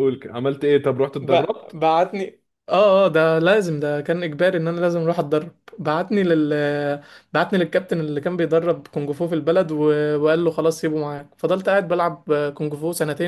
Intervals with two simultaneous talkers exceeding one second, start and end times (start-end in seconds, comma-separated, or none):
none